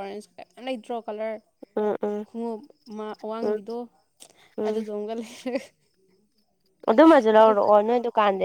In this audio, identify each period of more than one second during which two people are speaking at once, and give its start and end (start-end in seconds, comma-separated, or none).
none